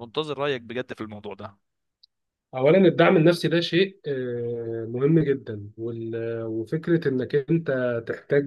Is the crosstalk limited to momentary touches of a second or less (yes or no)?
yes